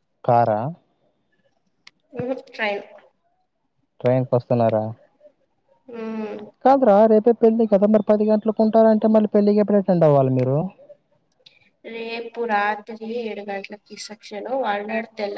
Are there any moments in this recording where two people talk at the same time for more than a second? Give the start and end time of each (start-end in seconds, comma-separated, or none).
none